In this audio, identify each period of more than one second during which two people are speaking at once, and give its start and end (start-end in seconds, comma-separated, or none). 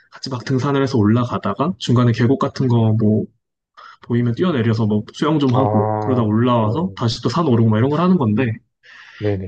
5.5-7.0